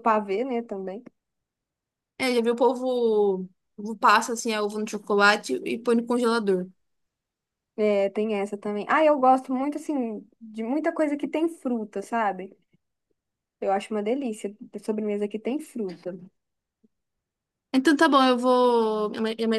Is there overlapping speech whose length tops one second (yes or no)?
no